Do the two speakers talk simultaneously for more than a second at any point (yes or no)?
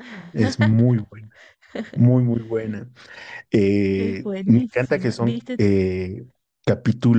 yes